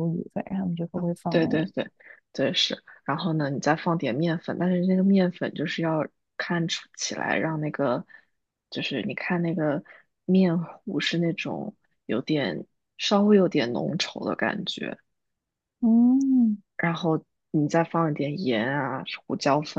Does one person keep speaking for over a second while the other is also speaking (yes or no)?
no